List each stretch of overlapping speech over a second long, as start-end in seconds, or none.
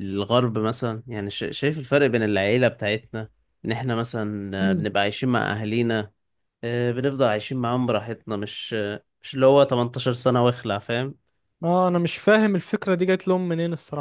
none